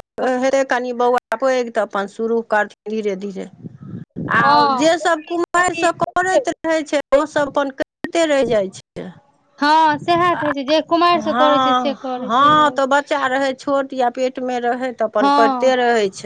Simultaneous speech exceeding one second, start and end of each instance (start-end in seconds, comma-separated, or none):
11.2-13.2